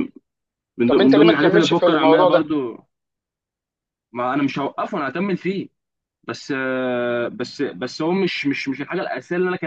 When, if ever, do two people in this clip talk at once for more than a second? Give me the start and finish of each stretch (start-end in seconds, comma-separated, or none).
0.9-2.5